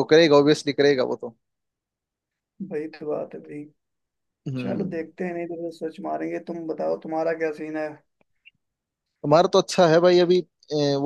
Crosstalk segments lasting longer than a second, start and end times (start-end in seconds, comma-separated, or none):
none